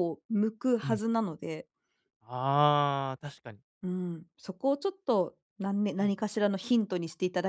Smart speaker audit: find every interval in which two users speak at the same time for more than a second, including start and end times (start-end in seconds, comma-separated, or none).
none